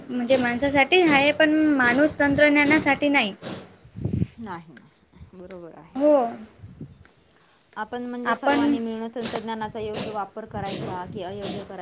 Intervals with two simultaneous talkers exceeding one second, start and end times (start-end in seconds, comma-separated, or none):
none